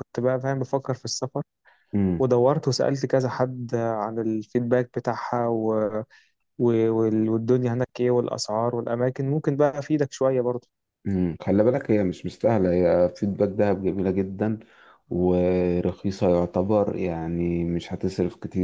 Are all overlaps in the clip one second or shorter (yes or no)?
yes